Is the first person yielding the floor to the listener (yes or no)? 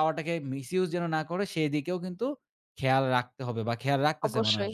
yes